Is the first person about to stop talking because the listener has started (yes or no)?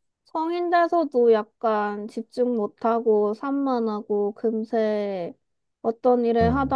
no